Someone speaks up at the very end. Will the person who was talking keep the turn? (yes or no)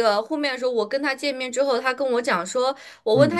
yes